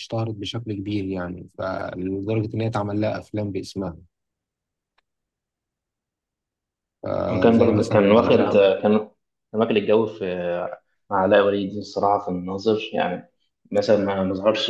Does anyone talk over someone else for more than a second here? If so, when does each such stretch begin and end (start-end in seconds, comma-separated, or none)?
7.3-8.7